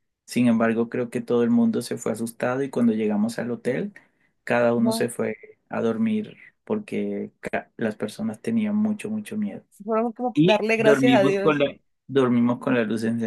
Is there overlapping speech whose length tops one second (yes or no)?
yes